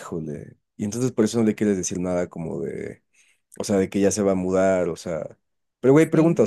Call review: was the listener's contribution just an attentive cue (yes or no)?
yes